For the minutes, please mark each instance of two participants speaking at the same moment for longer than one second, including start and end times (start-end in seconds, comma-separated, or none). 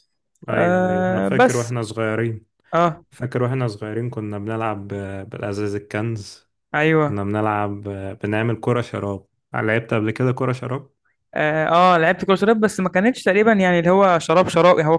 0.5-1.7